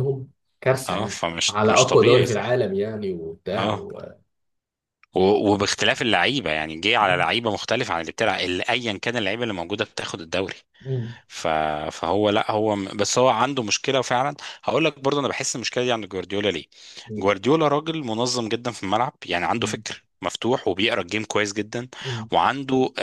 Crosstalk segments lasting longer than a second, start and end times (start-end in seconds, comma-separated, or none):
0.9-2.5